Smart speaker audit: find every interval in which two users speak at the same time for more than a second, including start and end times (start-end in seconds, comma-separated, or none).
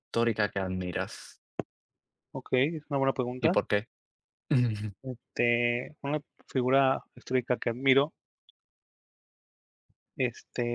none